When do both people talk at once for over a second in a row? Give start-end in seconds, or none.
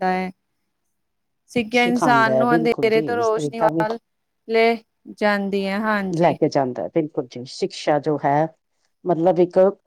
1.7-3.7